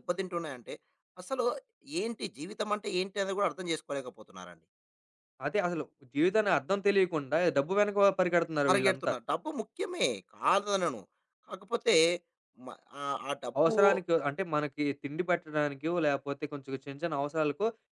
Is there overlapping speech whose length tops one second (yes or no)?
no